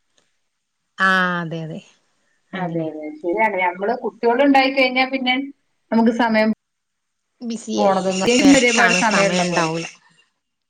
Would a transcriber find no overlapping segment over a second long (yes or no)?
no